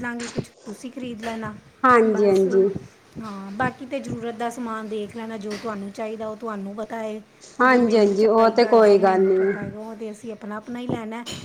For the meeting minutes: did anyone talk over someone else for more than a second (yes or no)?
yes